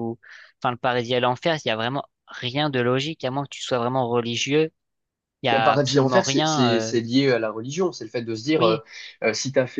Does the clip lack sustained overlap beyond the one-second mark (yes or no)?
no